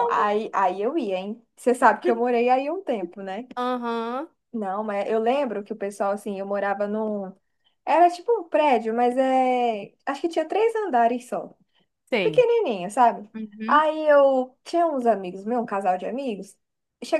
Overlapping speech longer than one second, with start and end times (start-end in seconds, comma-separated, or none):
none